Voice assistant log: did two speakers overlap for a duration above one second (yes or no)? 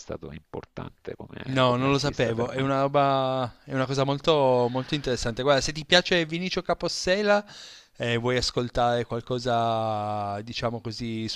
yes